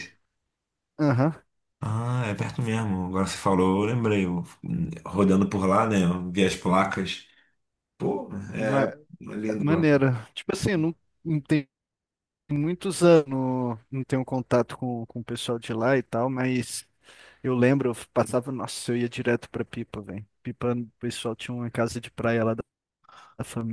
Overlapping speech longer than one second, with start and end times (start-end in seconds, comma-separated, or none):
none